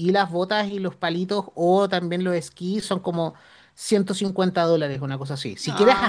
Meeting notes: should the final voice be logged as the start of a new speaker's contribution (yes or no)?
no